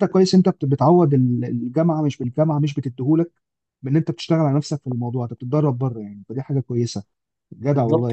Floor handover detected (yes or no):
yes